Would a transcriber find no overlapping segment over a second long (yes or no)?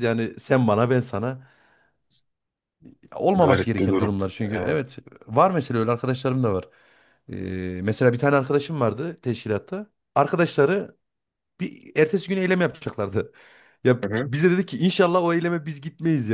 no